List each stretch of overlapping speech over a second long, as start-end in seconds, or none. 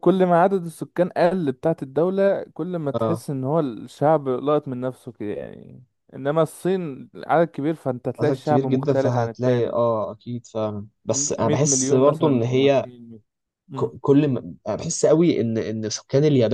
8.2-9.8, 11.1-12.9